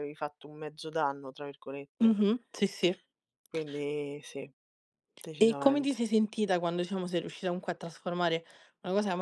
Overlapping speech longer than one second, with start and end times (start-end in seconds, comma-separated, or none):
none